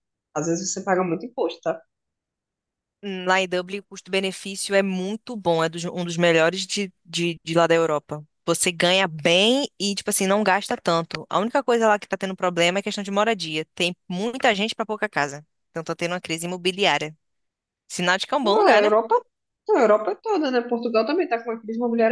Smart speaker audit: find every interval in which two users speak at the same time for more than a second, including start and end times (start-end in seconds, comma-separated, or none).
none